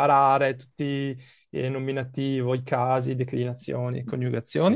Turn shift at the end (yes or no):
no